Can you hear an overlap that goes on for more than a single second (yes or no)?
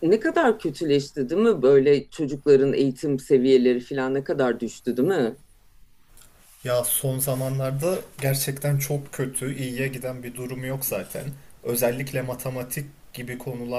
no